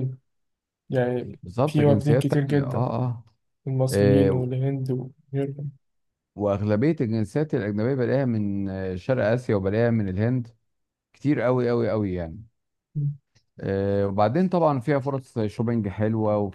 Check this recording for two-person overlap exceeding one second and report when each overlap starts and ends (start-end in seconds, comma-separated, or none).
1.4-2.9